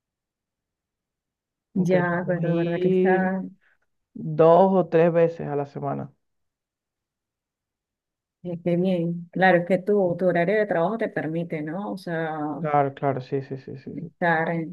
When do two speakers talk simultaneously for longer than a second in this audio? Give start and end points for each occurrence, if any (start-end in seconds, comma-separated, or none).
1.8-3.3